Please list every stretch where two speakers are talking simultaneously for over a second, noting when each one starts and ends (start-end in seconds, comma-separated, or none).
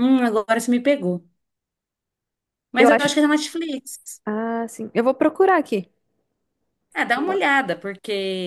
none